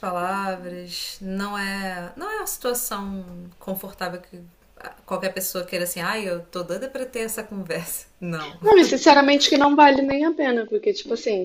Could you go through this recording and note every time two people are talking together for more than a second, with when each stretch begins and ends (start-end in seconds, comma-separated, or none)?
none